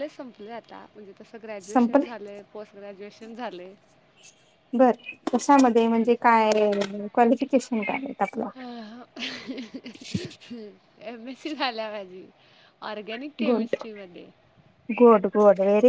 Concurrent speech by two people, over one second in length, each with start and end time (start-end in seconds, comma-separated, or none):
none